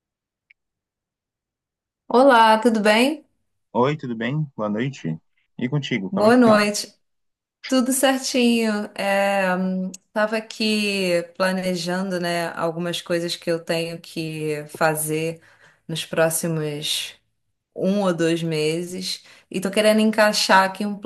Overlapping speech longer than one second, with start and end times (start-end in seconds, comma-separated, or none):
none